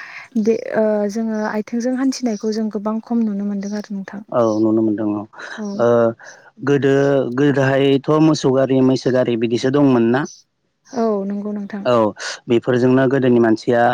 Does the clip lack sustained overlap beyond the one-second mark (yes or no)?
yes